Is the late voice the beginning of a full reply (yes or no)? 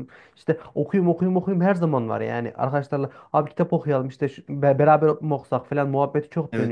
no